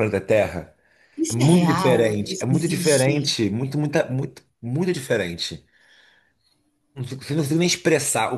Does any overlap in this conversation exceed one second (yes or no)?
yes